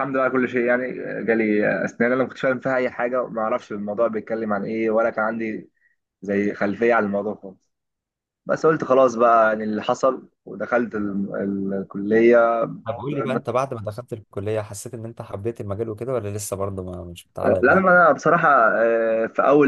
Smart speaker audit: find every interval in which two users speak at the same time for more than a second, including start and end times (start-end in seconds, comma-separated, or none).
none